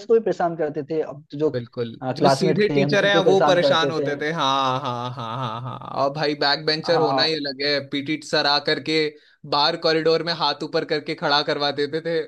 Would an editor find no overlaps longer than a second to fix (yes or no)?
no